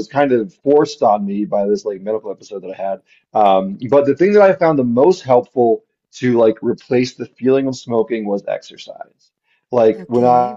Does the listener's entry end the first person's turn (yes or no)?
no